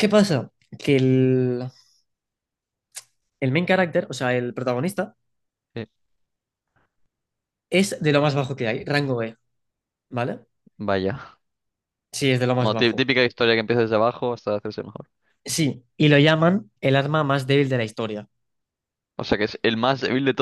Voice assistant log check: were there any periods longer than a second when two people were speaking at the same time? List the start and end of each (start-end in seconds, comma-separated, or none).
none